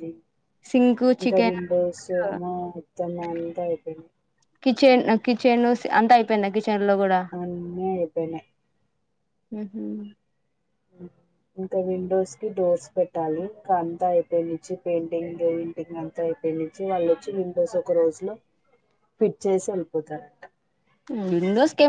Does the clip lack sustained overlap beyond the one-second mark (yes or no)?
yes